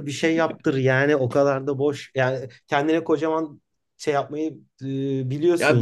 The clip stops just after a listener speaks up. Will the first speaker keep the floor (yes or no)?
no